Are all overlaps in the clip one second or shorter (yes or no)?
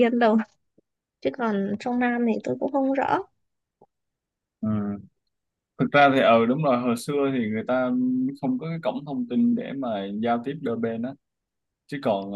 yes